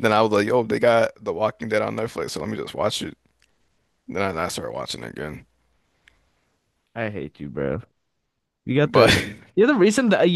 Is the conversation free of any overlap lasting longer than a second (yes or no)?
yes